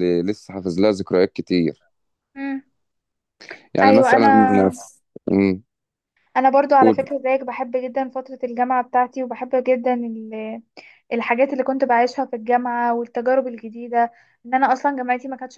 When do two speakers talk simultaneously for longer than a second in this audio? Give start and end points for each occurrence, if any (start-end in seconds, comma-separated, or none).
none